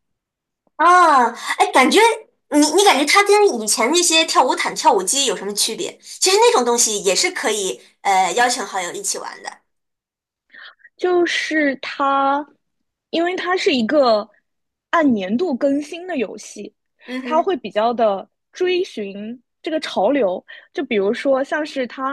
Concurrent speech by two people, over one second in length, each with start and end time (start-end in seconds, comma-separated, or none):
none